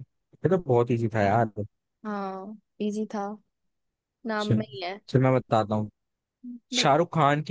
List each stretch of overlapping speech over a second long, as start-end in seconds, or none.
none